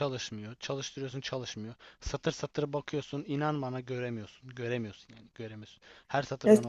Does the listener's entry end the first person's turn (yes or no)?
yes